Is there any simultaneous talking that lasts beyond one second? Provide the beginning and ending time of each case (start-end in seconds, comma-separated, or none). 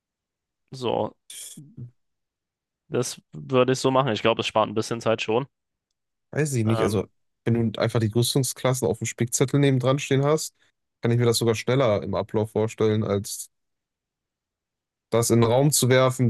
none